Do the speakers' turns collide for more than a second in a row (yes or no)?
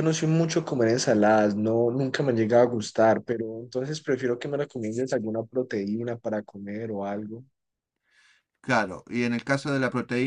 no